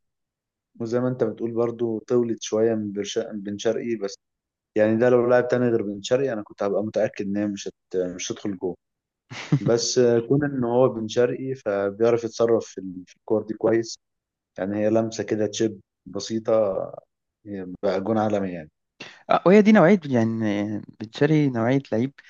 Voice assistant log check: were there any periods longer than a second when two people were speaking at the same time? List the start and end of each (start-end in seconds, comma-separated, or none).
none